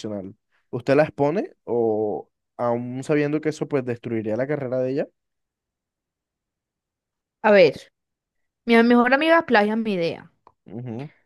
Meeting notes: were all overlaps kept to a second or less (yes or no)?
yes